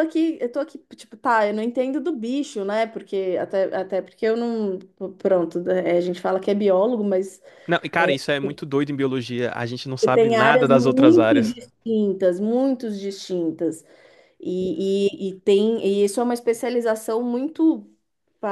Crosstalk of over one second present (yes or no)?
yes